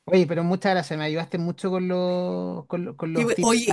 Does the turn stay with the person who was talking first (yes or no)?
no